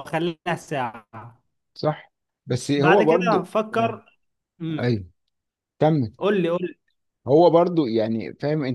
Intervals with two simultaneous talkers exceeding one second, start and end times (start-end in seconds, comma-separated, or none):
2.8-4.0